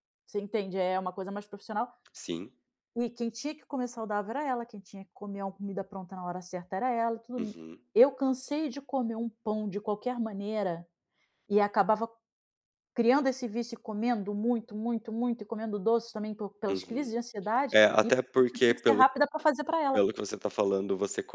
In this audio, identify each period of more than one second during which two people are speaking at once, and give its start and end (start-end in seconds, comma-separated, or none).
17.7-19.0